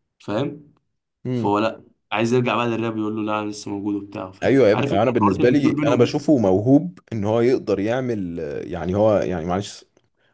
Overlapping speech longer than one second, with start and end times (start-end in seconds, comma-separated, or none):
4.4-6.2